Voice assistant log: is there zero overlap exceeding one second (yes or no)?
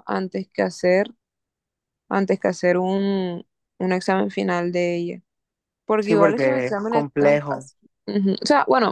no